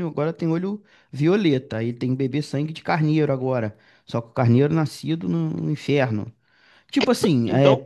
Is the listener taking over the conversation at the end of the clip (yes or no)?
no